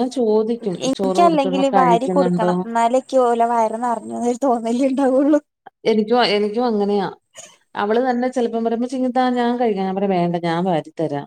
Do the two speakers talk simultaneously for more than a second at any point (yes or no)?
yes